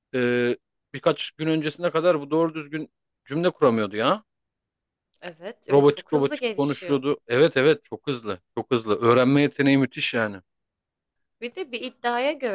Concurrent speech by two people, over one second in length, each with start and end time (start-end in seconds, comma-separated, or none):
5.7-7.0